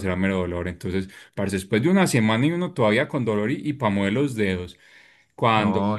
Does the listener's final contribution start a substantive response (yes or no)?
no